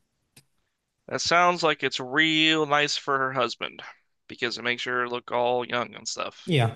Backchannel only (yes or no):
no